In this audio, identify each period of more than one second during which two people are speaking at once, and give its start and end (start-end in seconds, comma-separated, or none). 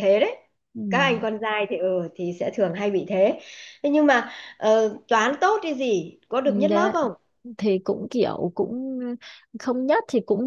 none